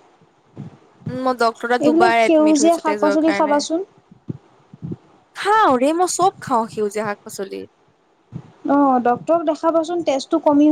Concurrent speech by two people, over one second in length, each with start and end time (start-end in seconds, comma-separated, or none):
1.8-3.6